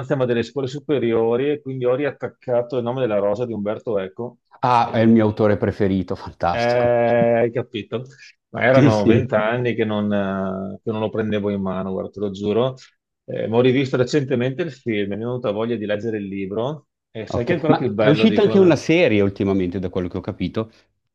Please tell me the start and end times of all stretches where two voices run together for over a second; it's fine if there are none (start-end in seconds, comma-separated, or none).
17.3-18.8